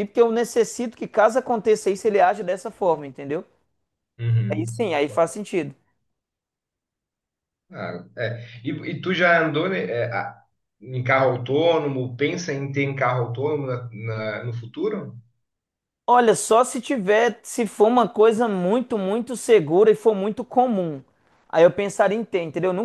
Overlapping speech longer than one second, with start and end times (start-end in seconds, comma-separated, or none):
none